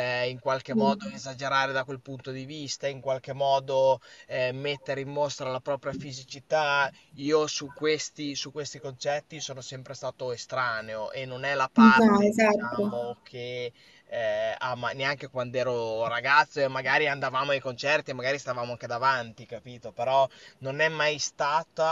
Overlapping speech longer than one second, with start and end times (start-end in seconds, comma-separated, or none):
11.8-13.2